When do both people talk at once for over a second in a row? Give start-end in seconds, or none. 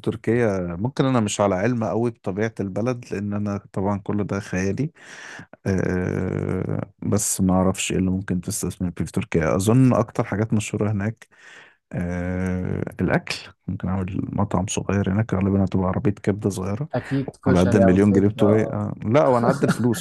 17.5-18.9